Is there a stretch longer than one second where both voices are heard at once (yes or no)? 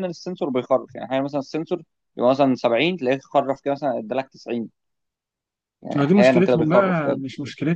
yes